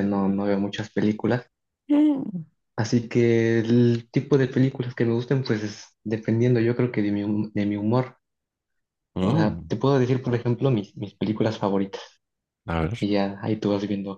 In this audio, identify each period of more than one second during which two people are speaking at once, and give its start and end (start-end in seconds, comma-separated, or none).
none